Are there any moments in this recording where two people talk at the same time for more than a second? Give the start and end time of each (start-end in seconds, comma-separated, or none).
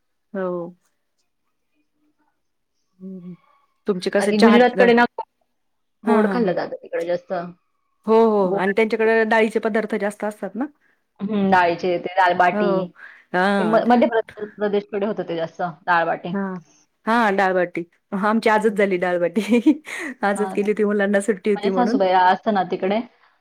none